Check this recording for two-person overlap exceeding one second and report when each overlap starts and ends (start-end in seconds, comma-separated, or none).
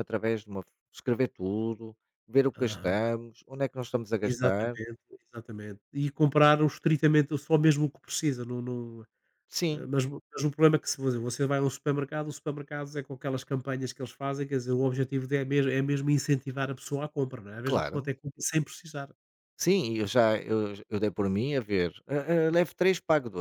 none